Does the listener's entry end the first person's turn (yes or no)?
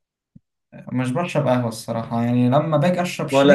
no